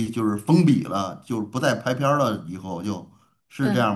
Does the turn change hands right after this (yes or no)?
yes